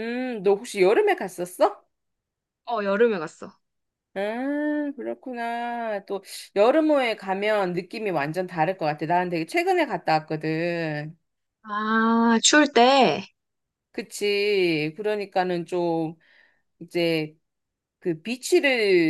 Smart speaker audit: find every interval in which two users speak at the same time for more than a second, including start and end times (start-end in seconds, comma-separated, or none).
none